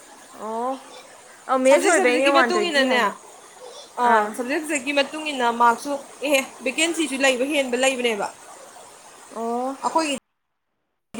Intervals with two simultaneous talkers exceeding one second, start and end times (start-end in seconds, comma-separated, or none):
1.6-3.1